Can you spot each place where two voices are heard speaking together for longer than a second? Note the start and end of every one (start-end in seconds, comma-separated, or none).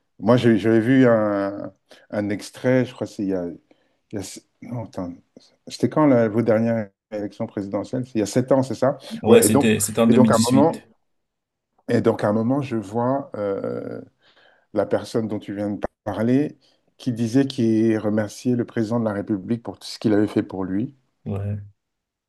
9.2-10.8